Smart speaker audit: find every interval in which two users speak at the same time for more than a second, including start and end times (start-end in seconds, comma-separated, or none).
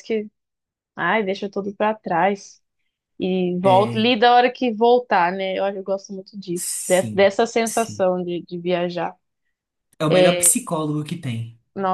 6.5-8.1